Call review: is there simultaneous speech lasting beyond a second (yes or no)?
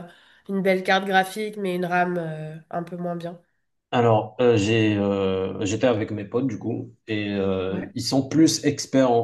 no